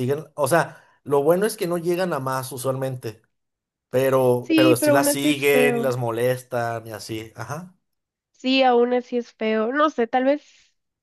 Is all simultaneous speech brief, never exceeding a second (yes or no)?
no